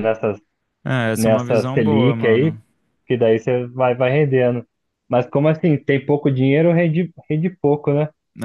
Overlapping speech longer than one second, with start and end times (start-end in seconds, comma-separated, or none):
1.1-2.6